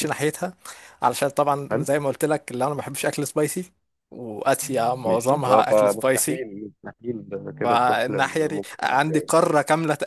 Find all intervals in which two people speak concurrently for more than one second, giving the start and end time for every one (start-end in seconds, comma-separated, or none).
5.1-6.4, 7.6-9.3